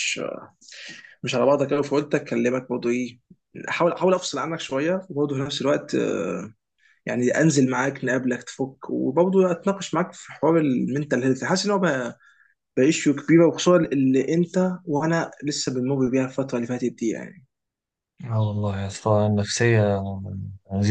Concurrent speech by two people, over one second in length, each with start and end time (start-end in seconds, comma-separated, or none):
none